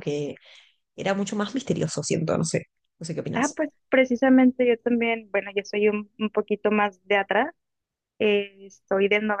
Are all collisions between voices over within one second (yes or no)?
yes